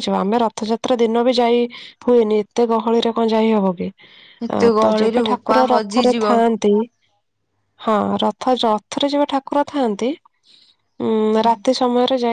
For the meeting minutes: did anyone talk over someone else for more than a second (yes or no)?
yes